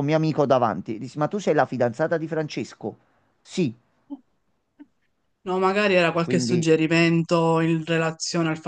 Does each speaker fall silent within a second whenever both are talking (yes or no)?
yes